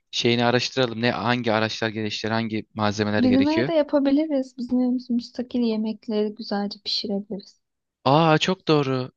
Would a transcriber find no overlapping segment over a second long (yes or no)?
yes